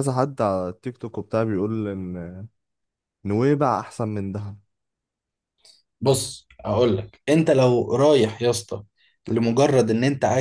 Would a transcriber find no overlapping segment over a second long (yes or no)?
yes